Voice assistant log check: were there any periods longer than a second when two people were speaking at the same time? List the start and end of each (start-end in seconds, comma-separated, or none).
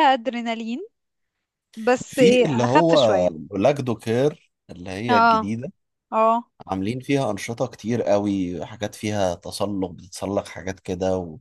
2.0-3.3